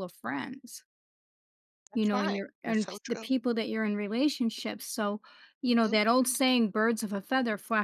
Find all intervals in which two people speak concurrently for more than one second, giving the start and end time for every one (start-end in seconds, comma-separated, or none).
1.9-3.3